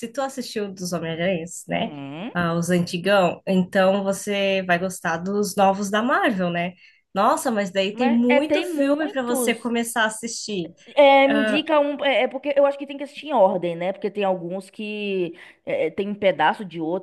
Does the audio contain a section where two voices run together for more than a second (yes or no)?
yes